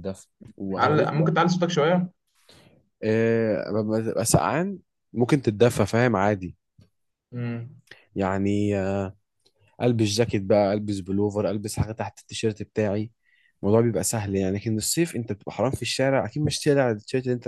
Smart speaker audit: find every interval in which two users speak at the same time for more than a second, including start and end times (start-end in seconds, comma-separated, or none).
none